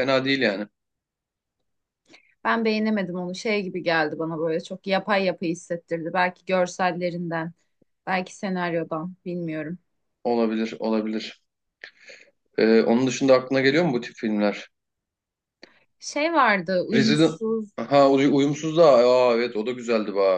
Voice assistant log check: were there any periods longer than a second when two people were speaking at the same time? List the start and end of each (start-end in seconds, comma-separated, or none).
none